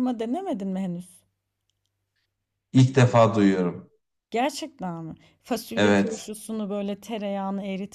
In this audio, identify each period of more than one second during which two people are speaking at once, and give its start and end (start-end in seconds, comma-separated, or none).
none